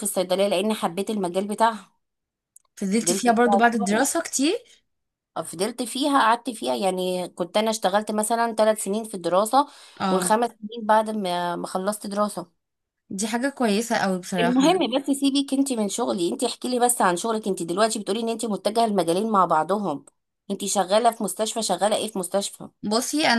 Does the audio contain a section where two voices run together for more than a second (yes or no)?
yes